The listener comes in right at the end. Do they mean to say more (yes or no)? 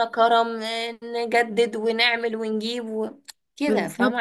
yes